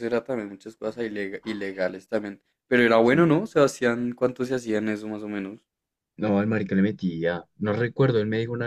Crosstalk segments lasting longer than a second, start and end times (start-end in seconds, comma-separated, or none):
none